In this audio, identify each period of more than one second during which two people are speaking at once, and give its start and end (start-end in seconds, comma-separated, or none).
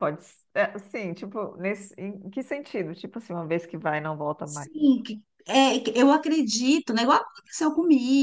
none